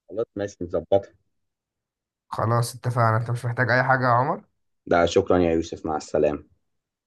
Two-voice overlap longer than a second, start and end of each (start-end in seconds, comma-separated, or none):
none